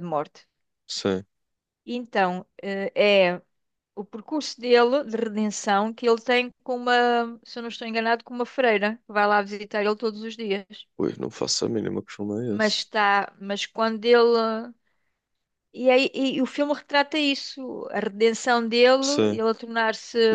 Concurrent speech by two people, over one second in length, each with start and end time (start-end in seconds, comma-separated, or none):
none